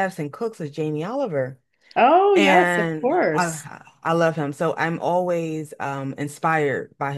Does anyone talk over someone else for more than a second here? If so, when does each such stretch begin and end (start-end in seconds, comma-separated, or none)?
2.3-3.7